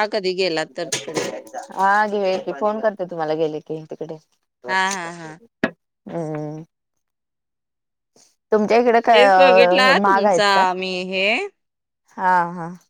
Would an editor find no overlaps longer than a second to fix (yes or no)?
no